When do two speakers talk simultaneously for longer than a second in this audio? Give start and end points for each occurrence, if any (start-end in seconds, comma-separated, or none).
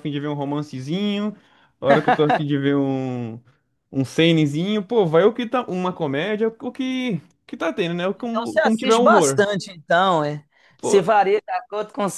8.2-9.4